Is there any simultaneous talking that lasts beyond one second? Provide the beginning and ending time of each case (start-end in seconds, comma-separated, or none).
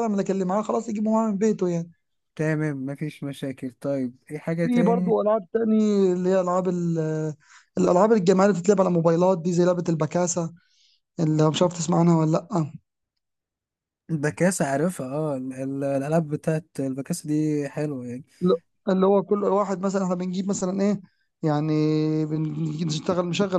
none